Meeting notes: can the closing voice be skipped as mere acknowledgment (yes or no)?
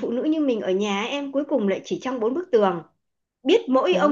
yes